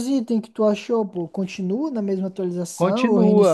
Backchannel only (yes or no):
no